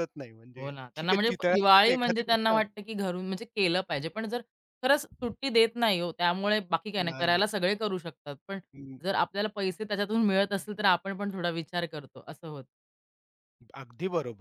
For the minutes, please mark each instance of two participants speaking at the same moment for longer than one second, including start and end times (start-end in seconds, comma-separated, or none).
0.6-2.6